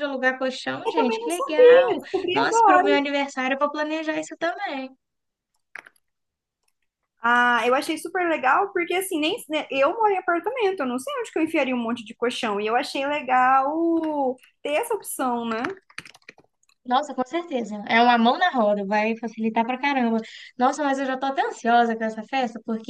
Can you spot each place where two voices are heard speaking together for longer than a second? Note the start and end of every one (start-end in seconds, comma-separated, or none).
0.8-3.0